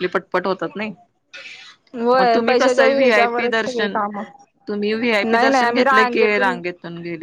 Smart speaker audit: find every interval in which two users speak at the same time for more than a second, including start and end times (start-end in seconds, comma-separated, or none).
2.2-4.0, 5.2-6.5